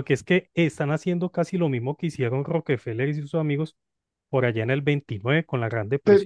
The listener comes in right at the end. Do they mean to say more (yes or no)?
yes